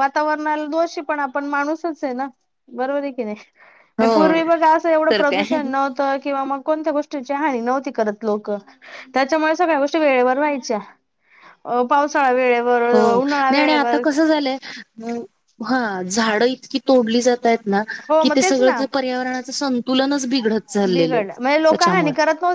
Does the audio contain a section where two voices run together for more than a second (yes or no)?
no